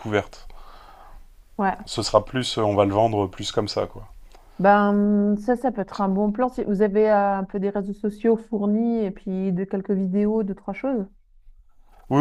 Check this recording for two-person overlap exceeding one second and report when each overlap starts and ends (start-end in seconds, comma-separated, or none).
none